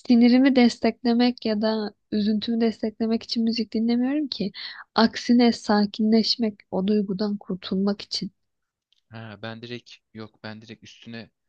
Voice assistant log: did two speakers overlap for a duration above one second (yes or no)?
no